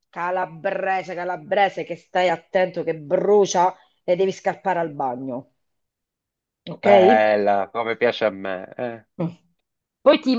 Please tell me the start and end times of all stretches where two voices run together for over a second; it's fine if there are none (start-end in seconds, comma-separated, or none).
none